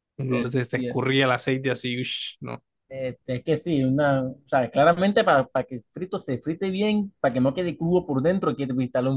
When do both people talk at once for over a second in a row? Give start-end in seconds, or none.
none